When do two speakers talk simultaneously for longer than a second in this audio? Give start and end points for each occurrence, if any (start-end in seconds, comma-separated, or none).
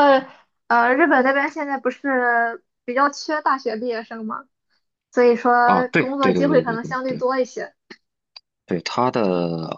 5.6-7.2